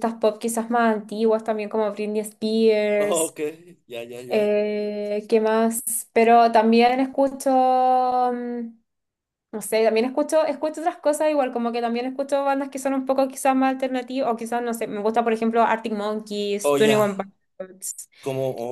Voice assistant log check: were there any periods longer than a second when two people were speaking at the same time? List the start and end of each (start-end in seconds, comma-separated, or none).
none